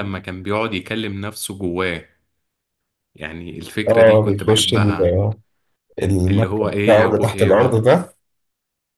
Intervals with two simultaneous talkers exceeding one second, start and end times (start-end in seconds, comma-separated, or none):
3.9-5.2, 6.3-7.8